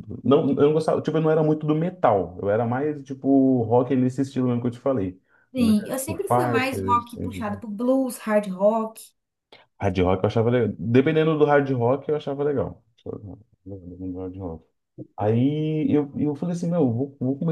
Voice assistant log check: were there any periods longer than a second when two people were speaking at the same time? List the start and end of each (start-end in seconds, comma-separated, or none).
5.6-7.2